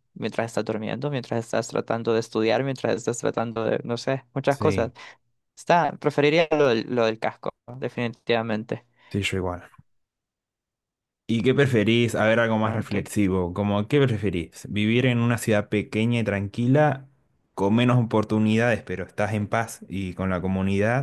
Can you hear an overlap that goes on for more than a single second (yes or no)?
no